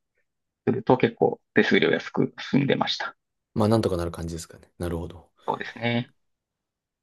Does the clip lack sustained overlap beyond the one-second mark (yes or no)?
yes